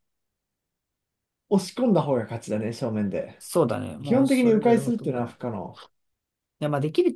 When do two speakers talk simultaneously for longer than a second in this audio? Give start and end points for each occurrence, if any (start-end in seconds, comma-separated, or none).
4.0-5.5